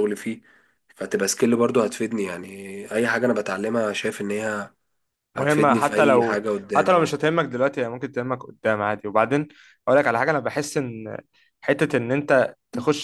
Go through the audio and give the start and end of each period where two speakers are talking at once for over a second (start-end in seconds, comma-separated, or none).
5.3-7.1